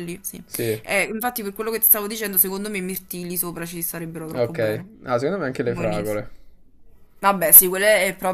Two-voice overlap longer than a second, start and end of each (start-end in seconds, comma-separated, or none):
none